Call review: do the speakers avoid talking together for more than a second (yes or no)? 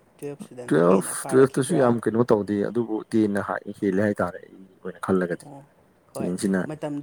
no